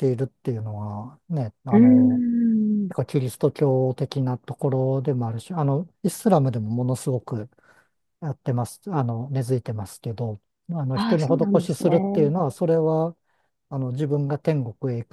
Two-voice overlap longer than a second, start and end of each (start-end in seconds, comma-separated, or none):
10.9-12.3